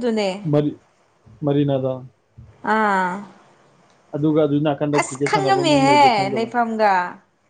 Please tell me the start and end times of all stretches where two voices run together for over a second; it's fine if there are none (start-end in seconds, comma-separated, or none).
5.2-6.5